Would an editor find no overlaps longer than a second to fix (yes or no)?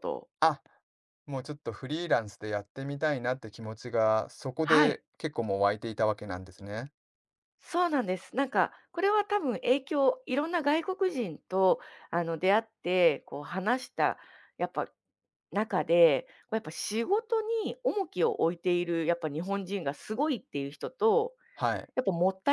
yes